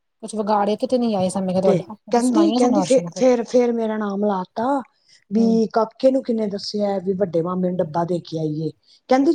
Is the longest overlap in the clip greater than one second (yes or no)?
yes